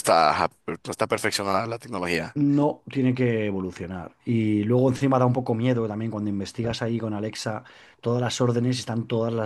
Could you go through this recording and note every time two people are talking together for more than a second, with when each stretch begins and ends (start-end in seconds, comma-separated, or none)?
none